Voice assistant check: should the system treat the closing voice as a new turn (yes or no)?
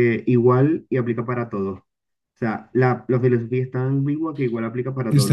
yes